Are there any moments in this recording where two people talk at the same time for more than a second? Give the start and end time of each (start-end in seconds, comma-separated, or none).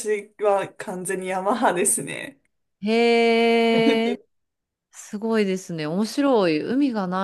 none